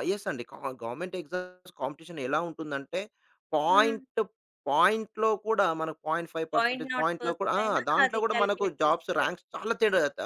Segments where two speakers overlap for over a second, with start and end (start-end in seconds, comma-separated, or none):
6.5-9.3